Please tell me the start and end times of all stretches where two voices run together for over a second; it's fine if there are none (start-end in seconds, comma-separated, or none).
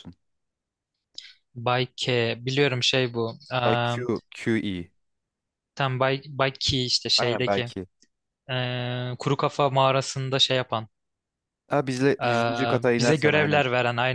12.2-13.7